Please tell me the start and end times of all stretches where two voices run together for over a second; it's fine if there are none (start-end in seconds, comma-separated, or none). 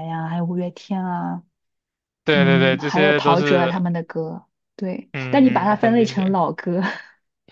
2.3-3.8, 5.1-6.3